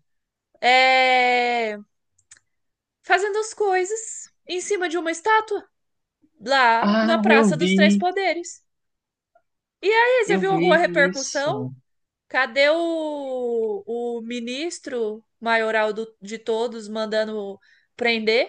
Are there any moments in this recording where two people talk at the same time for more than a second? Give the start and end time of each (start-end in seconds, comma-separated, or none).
6.8-8.1, 10.3-11.7